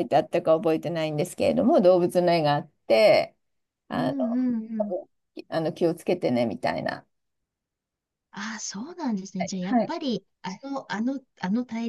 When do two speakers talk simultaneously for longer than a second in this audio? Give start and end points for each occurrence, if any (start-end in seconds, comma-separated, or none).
none